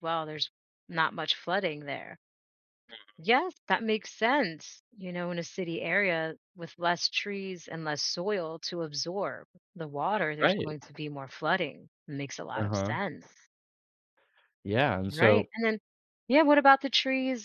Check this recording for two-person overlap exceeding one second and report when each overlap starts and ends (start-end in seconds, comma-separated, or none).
none